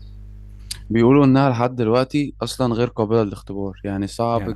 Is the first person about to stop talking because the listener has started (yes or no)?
no